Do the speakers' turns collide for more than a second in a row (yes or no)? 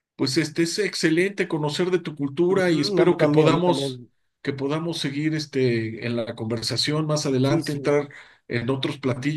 yes